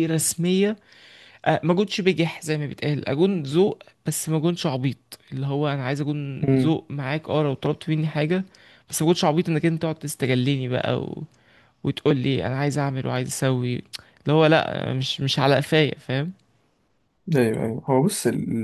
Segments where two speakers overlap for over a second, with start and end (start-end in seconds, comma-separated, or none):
none